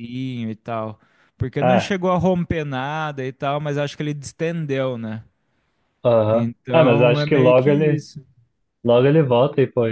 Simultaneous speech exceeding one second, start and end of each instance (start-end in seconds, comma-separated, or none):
6.3-8.1